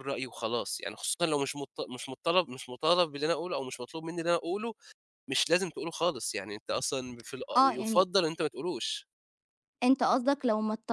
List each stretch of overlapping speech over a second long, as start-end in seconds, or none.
none